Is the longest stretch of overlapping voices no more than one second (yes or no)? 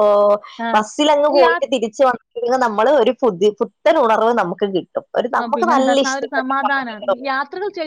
no